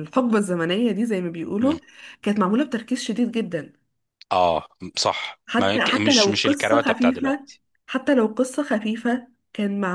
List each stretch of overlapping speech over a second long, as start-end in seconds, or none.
5.5-7.5